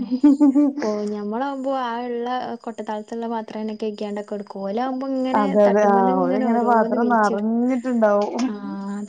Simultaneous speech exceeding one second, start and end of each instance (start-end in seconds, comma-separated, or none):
5.4-7.5